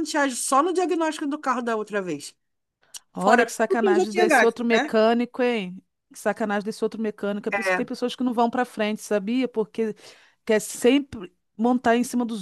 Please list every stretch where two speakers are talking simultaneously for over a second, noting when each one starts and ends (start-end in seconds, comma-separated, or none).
3.2-4.9